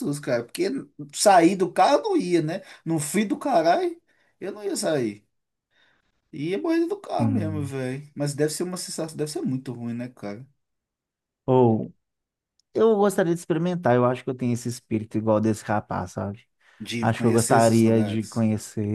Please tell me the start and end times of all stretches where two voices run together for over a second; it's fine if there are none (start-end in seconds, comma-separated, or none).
17.0-18.4